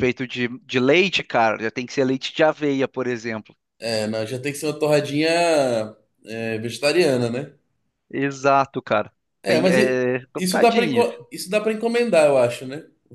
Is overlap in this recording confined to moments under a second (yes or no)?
no